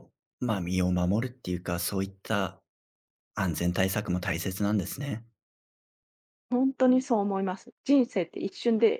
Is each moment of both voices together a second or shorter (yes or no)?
yes